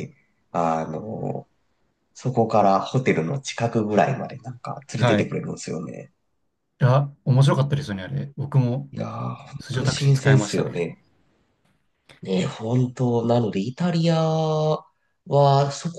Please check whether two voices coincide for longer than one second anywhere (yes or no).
yes